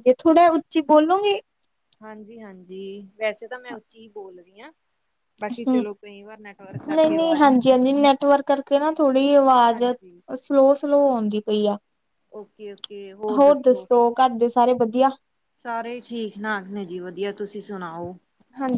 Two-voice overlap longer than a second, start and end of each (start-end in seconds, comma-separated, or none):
none